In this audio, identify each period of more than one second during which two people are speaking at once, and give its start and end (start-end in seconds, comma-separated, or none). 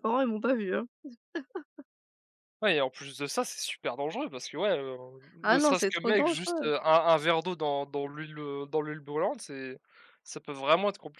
5.4-6.7